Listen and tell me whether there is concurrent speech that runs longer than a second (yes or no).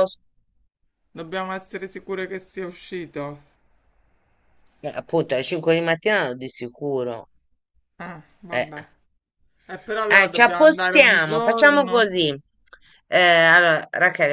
yes